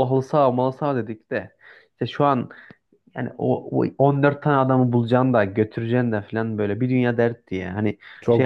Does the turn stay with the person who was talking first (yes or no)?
yes